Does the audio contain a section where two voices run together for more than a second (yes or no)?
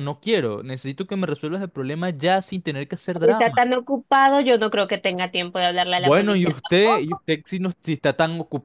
yes